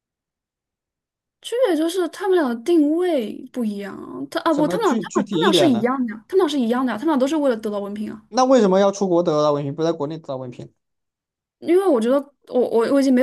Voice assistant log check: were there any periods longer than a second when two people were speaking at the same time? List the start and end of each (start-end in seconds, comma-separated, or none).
4.5-5.9